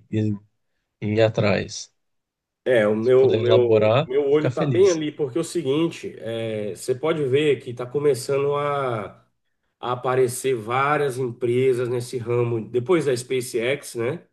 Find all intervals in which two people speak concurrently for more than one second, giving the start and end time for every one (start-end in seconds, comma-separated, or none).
3.0-5.0